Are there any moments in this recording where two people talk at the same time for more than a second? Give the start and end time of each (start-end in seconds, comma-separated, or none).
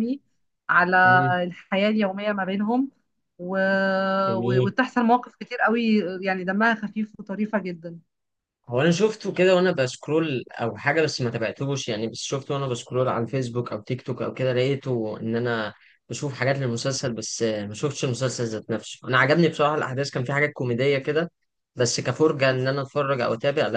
none